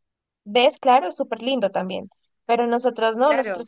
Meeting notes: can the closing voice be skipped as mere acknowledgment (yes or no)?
yes